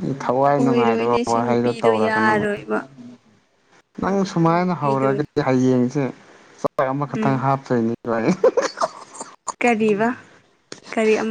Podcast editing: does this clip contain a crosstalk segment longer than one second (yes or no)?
yes